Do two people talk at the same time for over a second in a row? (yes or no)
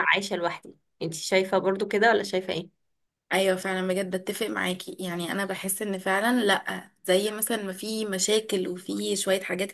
no